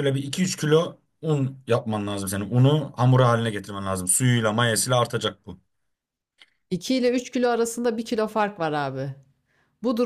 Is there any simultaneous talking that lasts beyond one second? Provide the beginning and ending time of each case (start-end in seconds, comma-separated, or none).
none